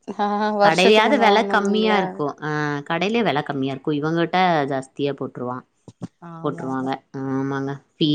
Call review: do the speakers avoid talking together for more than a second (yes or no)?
no